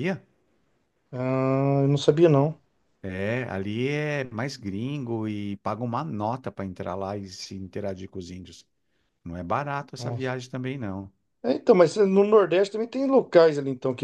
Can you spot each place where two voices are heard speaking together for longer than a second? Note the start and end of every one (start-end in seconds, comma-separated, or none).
none